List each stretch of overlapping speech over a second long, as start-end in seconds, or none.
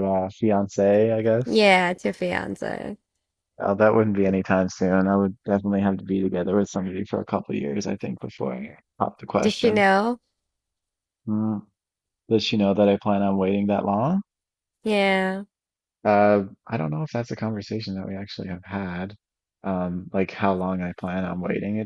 none